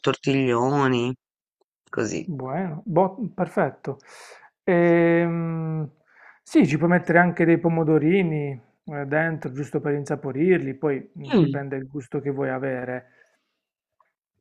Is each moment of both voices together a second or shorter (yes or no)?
yes